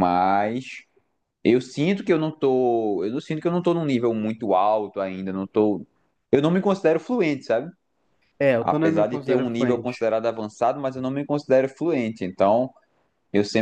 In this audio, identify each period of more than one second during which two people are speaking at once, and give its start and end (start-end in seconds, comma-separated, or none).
8.6-10.1